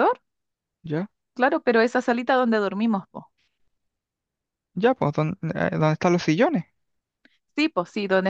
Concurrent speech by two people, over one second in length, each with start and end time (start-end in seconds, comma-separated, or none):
none